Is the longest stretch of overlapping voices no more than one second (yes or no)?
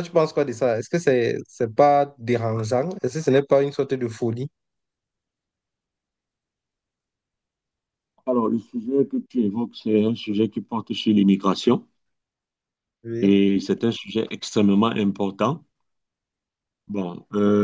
yes